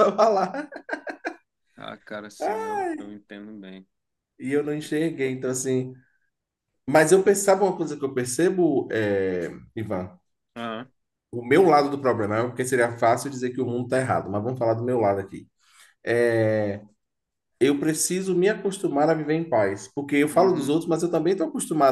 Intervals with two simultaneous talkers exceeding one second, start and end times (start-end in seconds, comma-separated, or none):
none